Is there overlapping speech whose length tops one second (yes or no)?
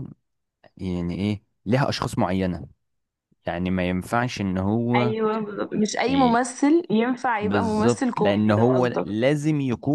yes